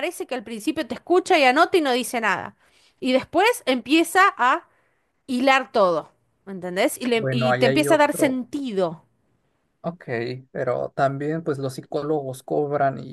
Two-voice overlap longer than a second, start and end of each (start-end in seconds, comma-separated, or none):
7.2-8.4